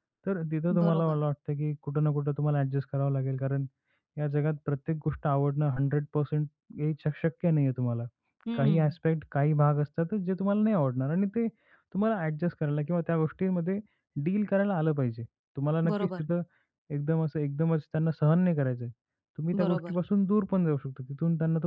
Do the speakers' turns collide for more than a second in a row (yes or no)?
no